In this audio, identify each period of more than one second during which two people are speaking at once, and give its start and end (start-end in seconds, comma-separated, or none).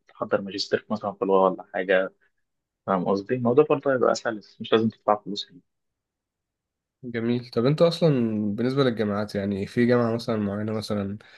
none